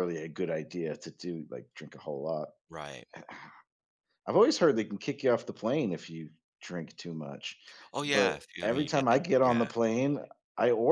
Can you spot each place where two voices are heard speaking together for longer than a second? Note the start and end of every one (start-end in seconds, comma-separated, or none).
8.0-9.7